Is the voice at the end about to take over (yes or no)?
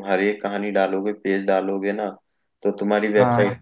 no